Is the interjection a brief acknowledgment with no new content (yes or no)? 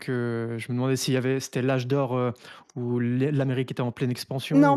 no